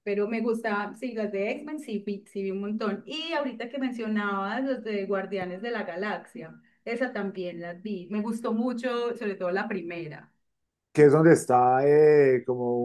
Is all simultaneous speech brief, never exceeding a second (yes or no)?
yes